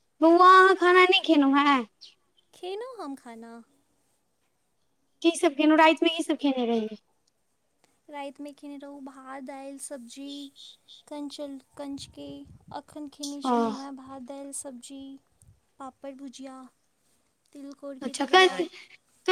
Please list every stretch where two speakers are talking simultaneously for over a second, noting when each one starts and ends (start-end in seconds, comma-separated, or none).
none